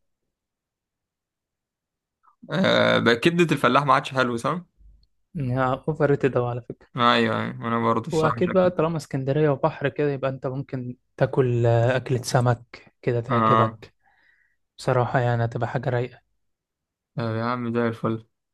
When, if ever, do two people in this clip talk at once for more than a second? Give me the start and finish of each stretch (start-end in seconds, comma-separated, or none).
none